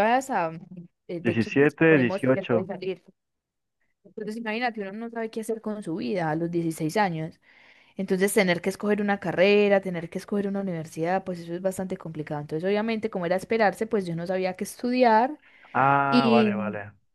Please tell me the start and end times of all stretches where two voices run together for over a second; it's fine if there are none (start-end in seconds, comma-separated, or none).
1.2-2.7